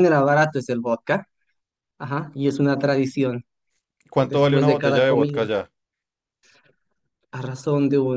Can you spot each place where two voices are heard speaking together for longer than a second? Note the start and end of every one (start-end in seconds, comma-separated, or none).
4.2-5.4